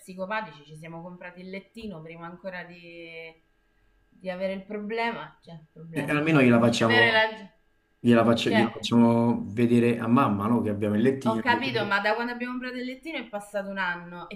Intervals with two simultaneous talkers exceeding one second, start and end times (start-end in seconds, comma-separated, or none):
5.9-7.2